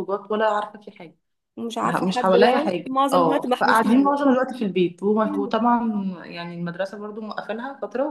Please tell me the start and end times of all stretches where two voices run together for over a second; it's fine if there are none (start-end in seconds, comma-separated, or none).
1.9-4.2